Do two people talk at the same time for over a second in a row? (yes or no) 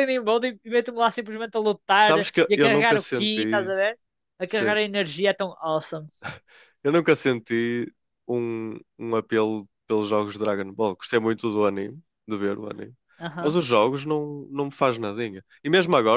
yes